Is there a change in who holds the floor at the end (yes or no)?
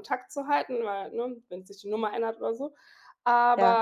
no